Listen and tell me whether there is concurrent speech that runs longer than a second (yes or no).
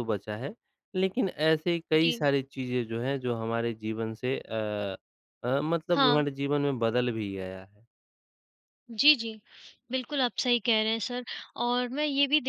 no